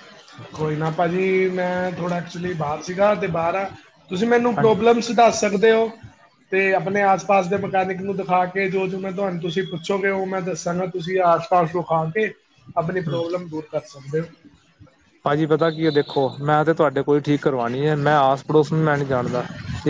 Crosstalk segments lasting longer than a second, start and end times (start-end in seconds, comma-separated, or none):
none